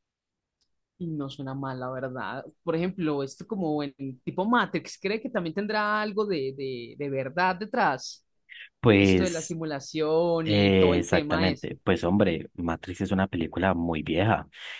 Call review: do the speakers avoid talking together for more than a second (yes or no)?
no